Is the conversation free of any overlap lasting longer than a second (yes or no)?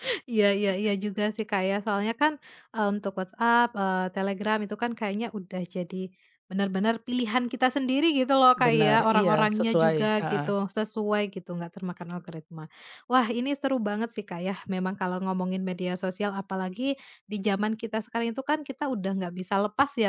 no